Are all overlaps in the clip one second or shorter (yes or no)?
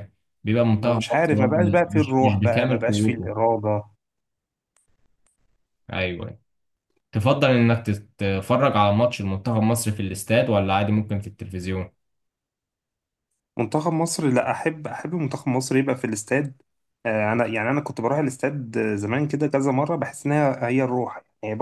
no